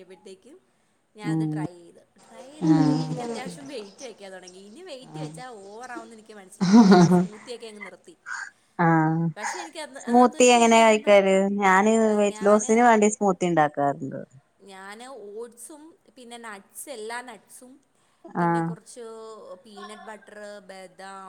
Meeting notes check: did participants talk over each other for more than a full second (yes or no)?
yes